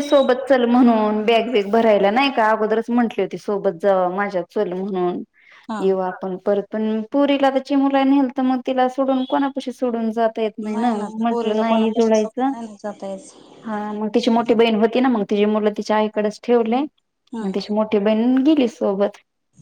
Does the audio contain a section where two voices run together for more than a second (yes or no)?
yes